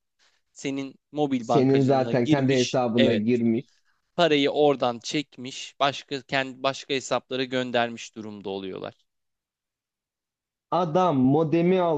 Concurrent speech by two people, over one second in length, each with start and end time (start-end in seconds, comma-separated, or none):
1.4-3.2